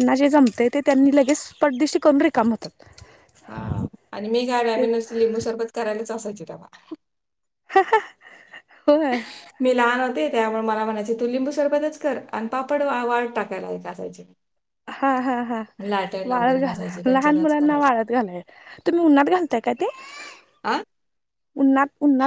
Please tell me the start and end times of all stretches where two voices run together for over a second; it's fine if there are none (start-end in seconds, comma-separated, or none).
16.4-17.9